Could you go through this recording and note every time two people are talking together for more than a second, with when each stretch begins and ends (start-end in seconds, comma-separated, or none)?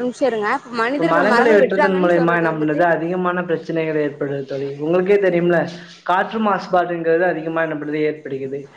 1.1-2.8